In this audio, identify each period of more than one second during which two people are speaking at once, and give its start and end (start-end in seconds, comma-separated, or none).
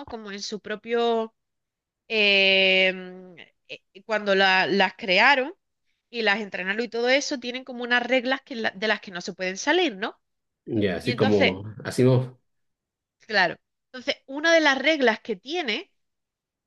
none